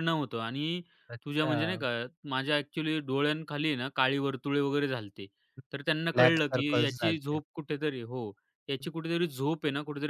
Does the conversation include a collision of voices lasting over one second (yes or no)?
yes